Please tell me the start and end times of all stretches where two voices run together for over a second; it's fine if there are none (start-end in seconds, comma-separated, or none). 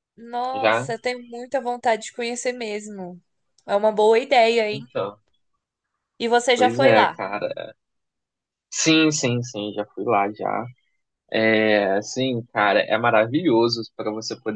none